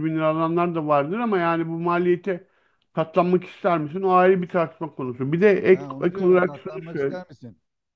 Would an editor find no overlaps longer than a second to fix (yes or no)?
no